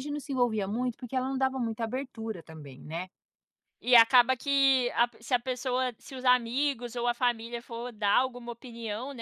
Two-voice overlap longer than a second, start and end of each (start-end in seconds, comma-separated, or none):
none